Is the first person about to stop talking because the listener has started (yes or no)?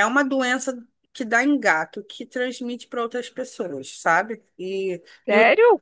yes